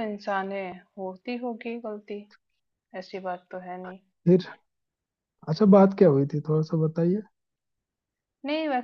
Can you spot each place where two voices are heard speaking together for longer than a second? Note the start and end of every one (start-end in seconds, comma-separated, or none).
none